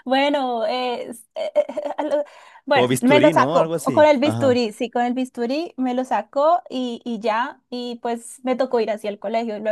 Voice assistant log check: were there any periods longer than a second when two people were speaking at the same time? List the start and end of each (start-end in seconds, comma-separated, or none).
2.7-4.6